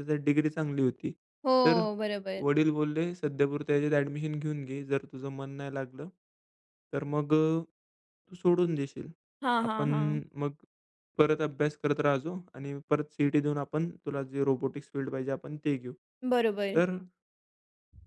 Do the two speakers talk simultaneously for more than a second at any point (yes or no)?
no